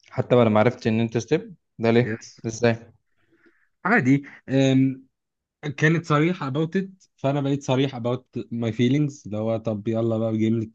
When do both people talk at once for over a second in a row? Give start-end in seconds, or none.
none